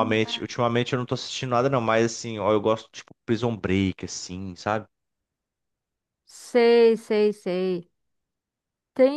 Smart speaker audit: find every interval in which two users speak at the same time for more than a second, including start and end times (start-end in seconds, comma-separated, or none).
none